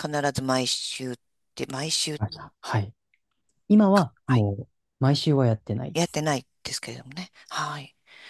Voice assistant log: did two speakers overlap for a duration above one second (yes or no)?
no